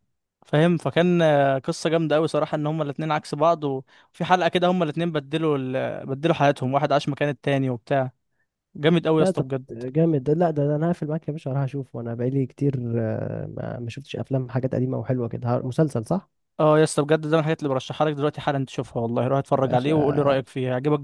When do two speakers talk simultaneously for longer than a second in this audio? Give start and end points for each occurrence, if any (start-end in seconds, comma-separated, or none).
none